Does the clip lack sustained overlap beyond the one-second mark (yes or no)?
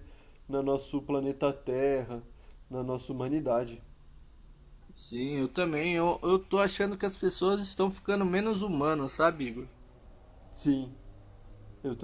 yes